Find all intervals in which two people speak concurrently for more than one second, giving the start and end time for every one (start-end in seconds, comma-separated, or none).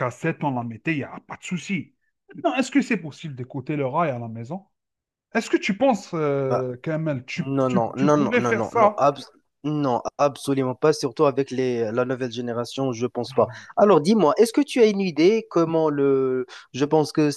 7.4-9.0